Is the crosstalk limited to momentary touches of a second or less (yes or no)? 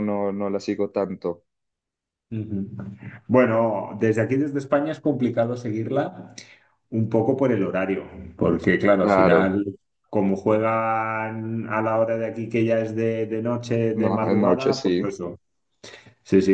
no